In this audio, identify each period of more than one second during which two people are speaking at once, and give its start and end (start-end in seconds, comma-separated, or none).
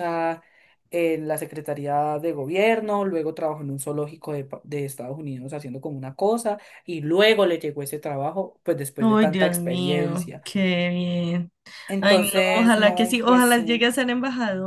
9.0-10.4, 12.0-13.8